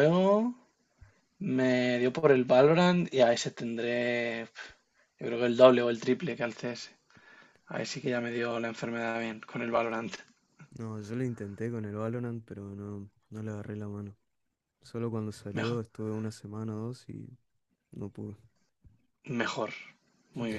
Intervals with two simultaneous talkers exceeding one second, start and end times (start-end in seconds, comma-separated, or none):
none